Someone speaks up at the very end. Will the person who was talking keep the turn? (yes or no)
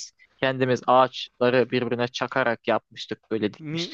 no